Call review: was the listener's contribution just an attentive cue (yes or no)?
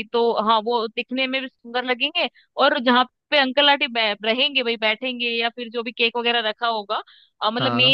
yes